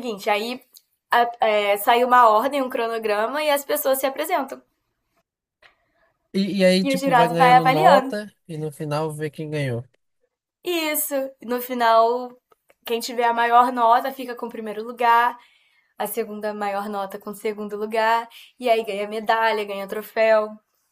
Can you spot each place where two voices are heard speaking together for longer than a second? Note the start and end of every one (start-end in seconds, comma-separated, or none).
6.8-8.1